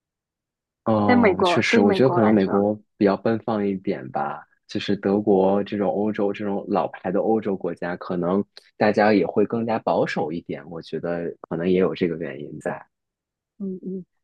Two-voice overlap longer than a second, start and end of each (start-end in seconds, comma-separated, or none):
1.0-2.7